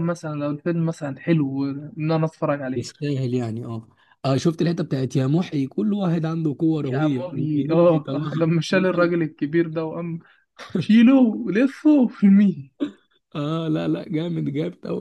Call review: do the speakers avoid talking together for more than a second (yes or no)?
no